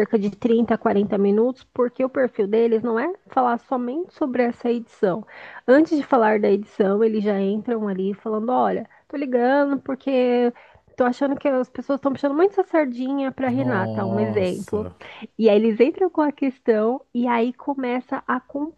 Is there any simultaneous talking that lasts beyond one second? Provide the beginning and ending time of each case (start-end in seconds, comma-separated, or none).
13.4-14.9